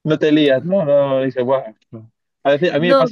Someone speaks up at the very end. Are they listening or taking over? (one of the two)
listening